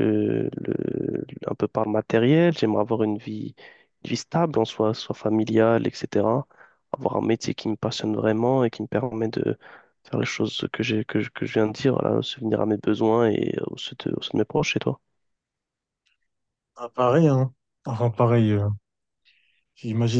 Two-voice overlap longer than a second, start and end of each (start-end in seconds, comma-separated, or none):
none